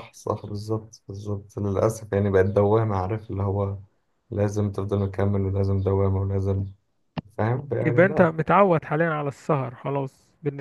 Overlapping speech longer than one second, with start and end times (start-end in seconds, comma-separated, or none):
none